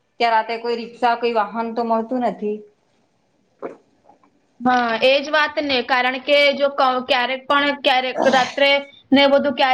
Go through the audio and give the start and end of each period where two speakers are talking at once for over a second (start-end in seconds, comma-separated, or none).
none